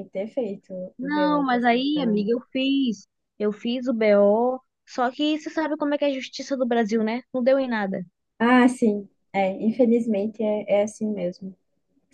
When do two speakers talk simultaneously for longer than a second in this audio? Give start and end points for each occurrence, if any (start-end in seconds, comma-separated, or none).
1.0-2.3